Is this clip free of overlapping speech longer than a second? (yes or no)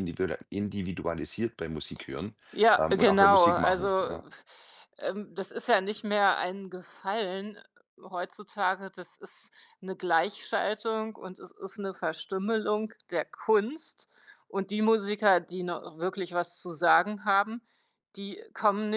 no